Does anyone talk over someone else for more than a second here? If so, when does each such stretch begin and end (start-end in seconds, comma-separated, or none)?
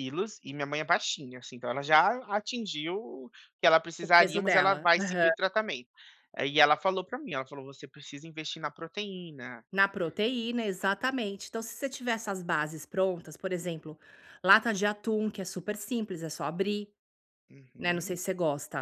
4.0-5.3